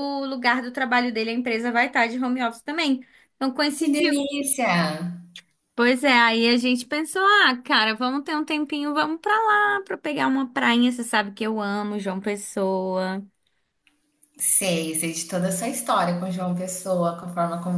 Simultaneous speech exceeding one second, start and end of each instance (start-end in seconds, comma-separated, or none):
none